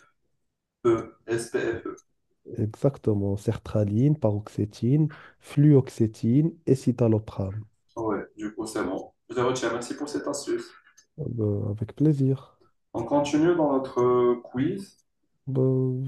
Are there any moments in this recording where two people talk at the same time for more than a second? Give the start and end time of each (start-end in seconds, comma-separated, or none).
none